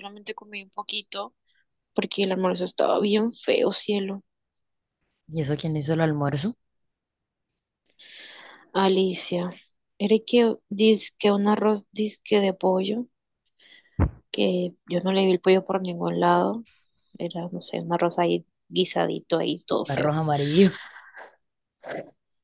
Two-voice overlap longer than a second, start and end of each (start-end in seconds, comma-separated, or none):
none